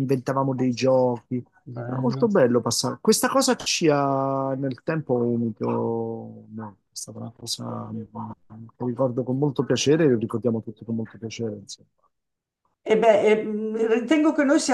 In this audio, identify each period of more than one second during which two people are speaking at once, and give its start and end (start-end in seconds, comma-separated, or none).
none